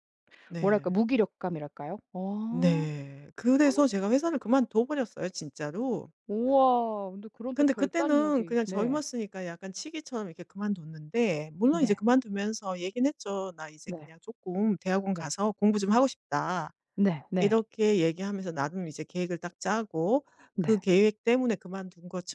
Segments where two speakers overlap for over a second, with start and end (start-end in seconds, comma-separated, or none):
7.5-9.0